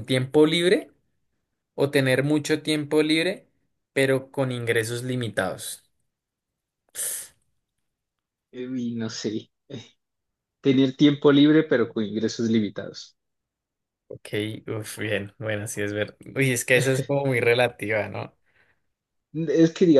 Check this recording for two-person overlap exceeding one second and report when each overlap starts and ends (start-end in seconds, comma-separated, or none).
none